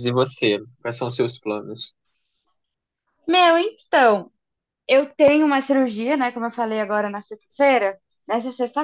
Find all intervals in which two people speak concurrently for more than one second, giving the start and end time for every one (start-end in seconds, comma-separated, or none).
none